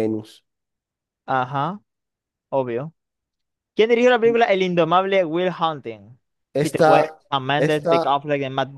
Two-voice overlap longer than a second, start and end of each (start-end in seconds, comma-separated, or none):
6.6-8.2